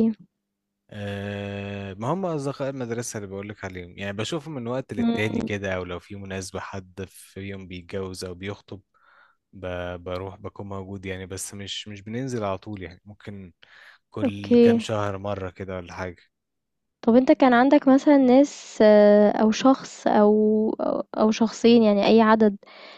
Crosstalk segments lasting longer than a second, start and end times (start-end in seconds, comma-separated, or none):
none